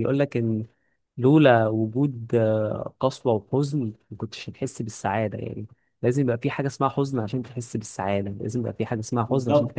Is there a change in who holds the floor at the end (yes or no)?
yes